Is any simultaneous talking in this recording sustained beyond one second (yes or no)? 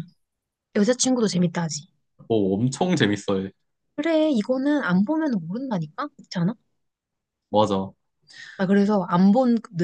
no